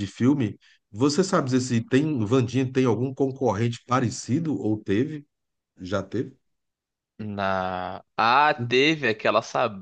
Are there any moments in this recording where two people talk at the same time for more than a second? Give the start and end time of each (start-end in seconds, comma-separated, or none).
none